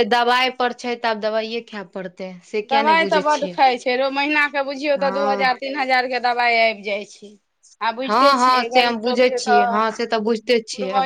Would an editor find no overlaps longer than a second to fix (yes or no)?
no